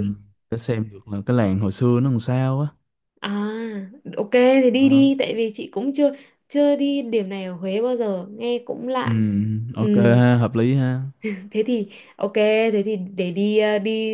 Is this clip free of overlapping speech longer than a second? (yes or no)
yes